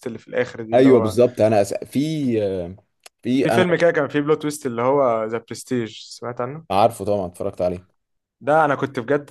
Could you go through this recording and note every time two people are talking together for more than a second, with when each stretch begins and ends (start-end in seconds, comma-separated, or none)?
none